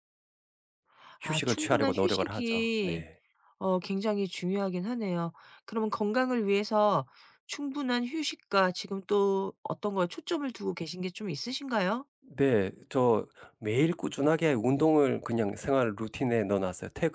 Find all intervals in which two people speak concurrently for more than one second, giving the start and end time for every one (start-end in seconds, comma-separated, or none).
1.2-3.1